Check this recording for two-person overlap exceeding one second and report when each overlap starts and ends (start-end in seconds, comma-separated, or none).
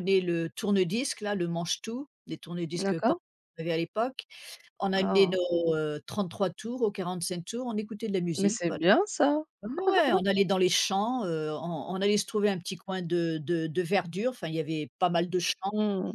none